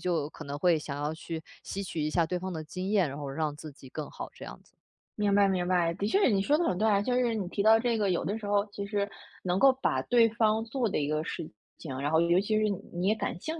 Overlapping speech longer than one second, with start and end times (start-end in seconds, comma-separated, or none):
none